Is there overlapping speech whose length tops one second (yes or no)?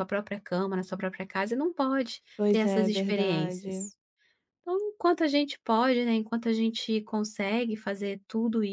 yes